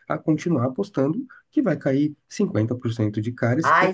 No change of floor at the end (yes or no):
no